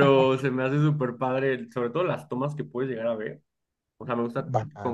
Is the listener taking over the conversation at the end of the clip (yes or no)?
no